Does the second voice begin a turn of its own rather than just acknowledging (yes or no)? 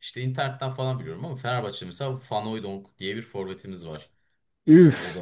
no